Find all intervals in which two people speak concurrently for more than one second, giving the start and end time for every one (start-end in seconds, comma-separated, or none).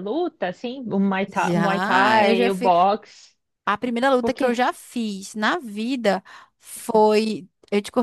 1.4-2.7